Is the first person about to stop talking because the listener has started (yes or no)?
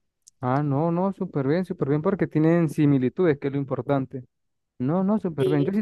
no